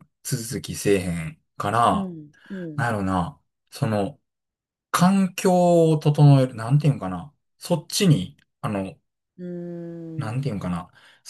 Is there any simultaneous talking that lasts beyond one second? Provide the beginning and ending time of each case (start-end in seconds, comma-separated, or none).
none